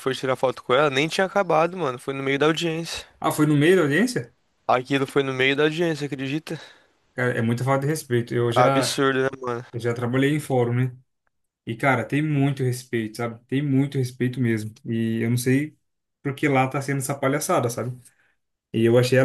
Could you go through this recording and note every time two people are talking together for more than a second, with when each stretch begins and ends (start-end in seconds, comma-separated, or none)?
none